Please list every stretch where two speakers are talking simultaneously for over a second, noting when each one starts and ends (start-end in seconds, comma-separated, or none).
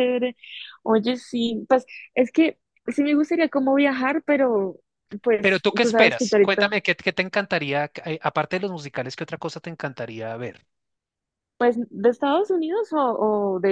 5.4-6.7